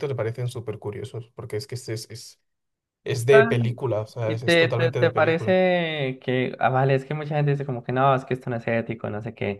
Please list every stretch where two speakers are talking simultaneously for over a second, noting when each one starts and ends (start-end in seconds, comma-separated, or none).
4.2-5.6